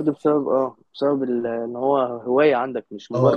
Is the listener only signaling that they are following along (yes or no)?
no